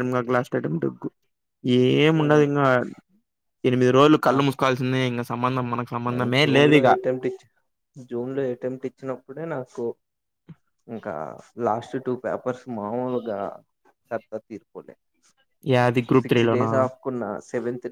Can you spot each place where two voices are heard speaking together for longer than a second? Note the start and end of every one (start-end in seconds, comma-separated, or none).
none